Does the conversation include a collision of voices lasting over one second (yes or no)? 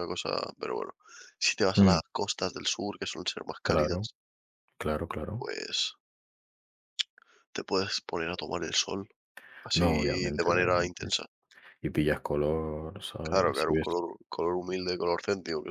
yes